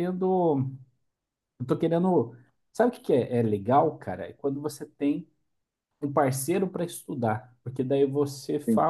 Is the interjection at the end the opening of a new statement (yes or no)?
no